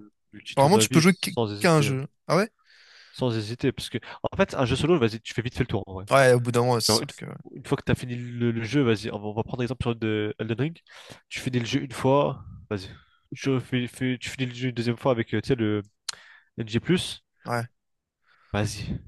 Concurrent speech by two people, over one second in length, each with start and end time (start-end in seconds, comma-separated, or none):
0.5-2.0